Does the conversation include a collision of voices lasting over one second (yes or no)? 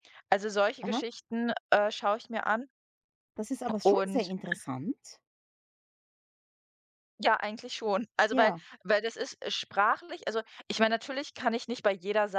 no